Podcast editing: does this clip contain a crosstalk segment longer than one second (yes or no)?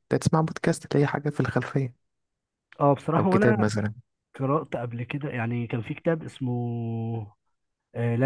no